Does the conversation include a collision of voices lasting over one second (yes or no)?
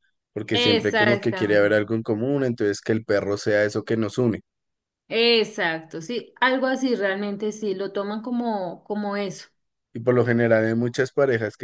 yes